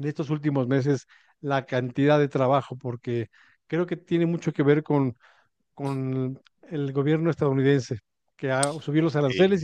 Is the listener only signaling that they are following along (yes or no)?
yes